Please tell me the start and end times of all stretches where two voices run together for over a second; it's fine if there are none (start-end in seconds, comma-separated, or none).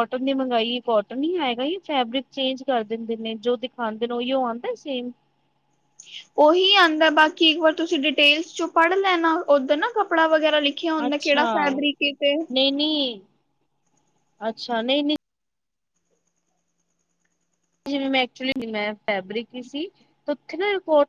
none